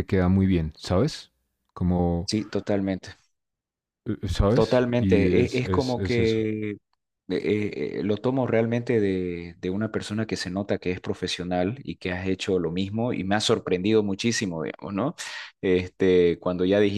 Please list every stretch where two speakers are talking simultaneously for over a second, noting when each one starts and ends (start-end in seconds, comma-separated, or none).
4.5-6.4